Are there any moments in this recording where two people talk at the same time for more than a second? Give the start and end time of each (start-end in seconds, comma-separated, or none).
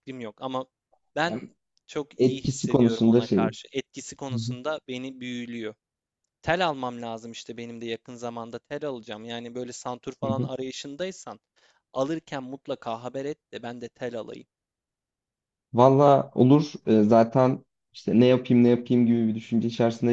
2.2-3.4